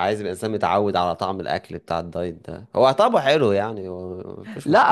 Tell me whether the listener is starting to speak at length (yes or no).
yes